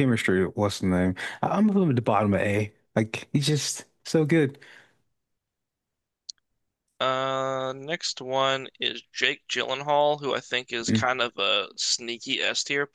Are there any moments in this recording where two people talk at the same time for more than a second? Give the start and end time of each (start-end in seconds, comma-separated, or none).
none